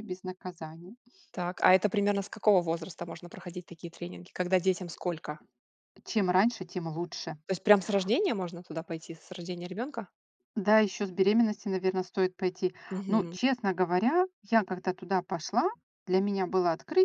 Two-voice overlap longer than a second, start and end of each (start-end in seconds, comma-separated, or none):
none